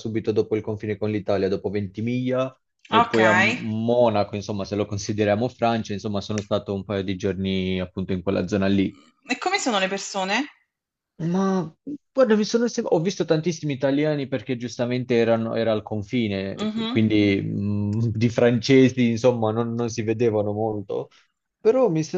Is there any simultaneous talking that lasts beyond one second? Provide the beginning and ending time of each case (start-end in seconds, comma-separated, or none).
none